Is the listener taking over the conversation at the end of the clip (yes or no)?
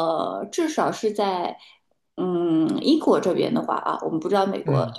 no